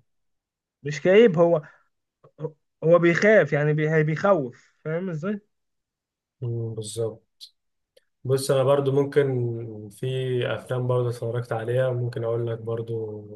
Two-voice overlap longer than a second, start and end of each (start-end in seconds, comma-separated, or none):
none